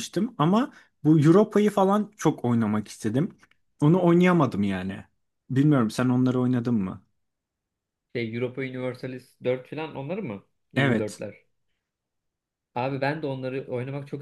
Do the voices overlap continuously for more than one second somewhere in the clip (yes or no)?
no